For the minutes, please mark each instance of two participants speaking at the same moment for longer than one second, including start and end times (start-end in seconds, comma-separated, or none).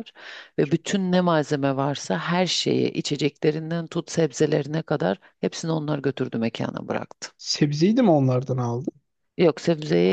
none